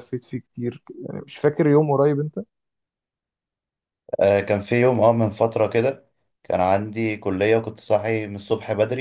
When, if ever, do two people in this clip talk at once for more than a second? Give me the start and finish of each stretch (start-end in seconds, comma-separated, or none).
none